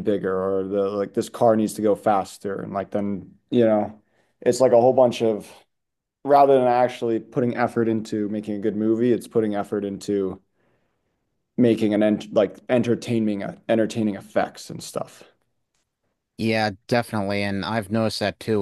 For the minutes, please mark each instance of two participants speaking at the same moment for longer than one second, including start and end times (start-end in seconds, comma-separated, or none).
none